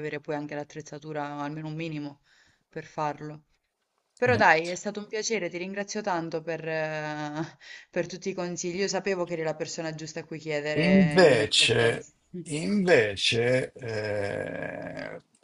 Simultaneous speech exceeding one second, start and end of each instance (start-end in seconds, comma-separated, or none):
10.7-12.1